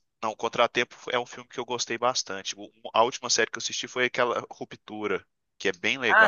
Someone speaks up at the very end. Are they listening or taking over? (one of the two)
taking over